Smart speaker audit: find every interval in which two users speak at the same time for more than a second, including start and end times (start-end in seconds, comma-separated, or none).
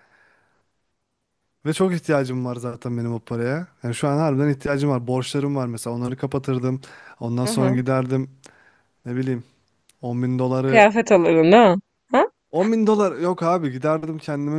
none